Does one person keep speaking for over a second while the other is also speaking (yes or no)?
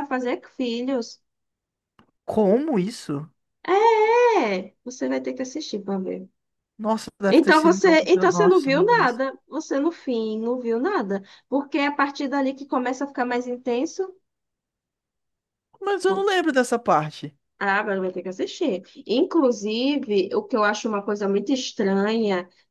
yes